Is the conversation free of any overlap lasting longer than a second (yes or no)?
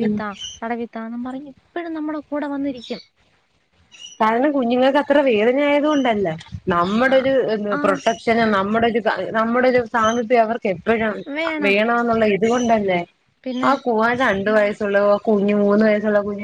yes